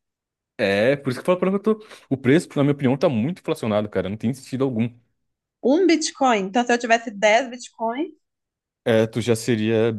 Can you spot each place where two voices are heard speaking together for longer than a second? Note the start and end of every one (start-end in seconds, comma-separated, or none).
none